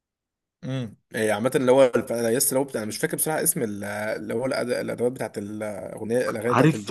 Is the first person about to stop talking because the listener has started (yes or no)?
yes